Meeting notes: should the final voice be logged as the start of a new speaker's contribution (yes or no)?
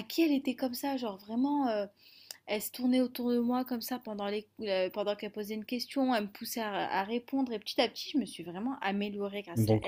yes